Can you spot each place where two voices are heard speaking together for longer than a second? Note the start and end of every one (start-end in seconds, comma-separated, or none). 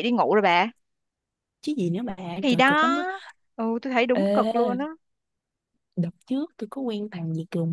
none